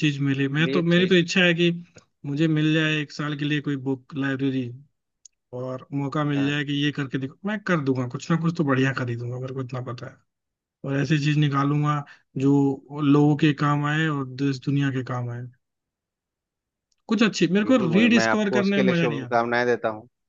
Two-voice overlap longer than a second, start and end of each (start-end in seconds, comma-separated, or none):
17.6-19.5